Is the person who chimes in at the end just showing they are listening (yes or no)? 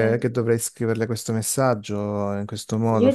no